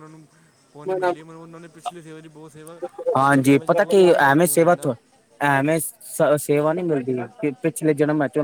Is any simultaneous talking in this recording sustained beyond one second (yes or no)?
yes